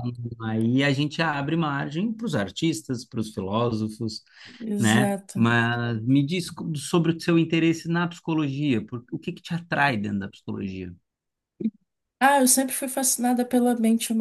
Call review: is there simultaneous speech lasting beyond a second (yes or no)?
no